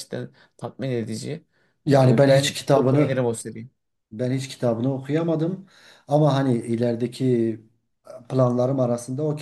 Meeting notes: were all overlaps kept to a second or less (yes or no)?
no